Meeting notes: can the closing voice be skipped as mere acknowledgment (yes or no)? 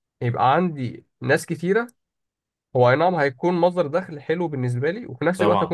yes